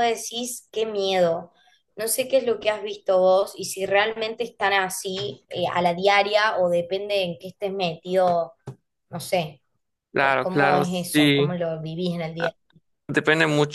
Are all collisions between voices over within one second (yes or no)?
no